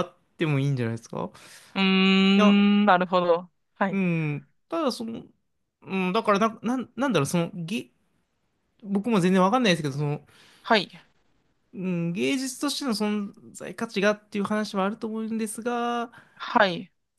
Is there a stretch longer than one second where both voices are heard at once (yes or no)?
no